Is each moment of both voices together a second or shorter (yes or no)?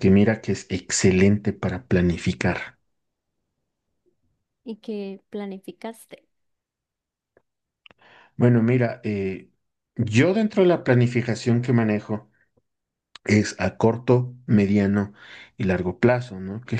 yes